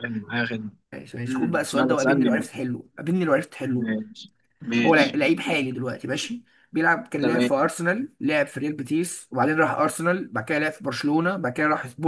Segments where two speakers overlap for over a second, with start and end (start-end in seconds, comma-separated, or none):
1.3-2.5